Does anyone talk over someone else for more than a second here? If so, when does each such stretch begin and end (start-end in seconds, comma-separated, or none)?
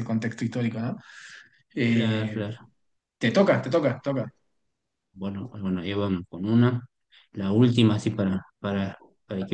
none